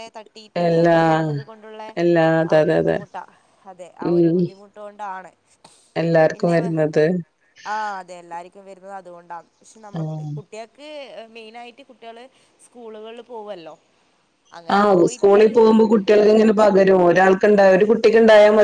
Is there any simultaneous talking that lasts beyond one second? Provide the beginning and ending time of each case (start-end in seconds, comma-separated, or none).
none